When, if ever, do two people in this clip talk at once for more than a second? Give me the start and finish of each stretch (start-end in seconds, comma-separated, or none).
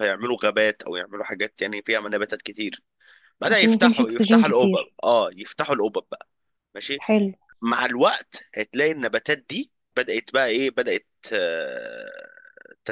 3.5-4.9